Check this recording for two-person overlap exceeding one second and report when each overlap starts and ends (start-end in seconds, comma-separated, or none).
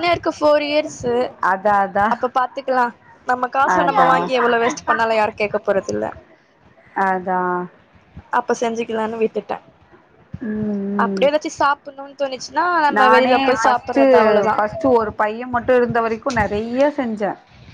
none